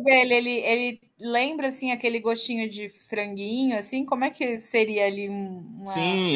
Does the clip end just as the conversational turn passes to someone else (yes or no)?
yes